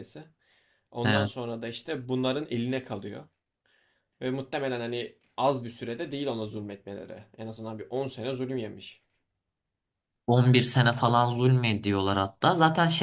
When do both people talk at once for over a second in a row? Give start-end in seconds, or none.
none